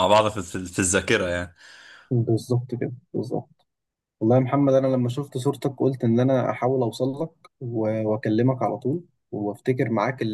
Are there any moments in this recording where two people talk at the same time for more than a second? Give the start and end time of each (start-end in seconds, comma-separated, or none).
none